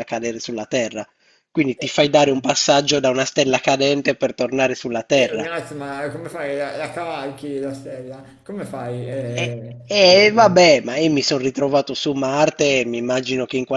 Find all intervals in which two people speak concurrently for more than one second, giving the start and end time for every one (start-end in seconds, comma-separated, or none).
none